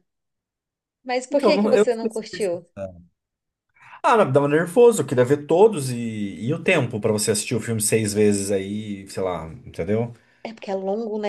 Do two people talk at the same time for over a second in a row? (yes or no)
yes